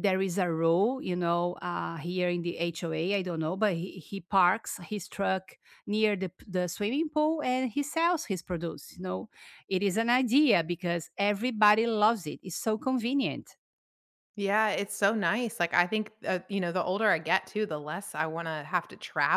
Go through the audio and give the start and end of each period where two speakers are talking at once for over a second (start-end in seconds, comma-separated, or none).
none